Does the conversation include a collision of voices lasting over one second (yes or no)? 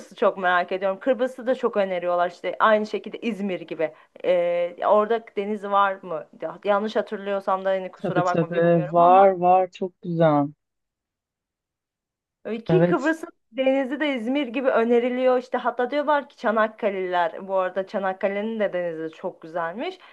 yes